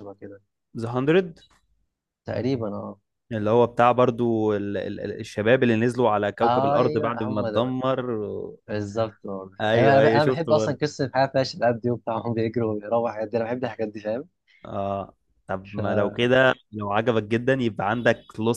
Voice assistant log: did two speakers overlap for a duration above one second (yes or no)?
yes